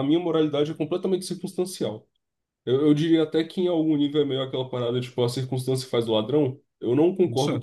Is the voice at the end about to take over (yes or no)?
no